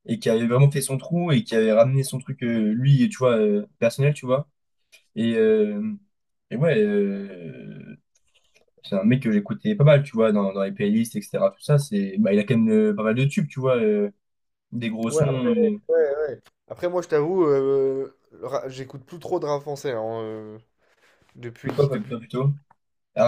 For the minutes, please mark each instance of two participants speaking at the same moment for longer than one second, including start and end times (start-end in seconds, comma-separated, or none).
none